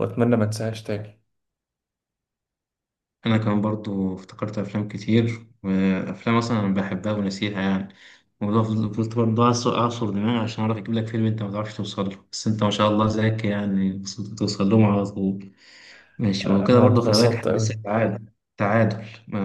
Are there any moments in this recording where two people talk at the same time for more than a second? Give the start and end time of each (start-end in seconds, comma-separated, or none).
16.4-17.8